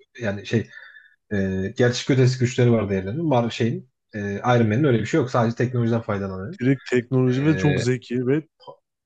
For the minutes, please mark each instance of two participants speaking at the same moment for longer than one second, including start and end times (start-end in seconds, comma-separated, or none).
none